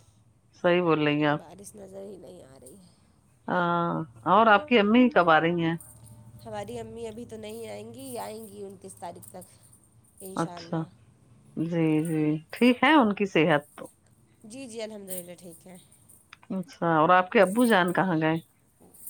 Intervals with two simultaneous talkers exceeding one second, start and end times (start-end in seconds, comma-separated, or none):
none